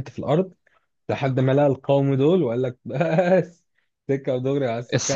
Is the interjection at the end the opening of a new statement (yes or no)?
yes